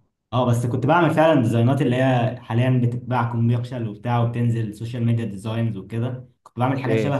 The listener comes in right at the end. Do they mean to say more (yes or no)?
no